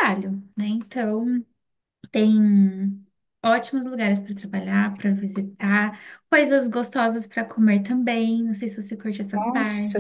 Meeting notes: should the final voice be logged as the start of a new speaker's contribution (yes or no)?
yes